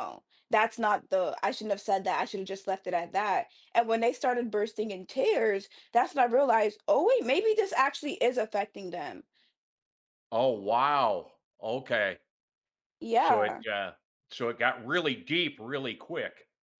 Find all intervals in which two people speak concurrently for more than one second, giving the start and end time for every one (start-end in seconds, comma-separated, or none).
none